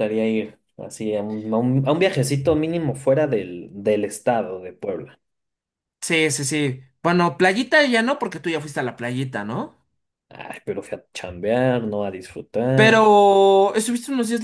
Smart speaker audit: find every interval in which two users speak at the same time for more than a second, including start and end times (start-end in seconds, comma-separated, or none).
none